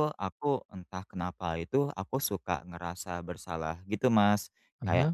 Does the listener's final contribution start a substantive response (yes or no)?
no